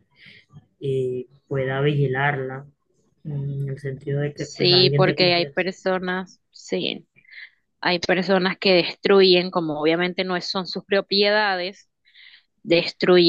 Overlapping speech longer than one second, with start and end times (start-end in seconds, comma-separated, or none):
4.3-5.7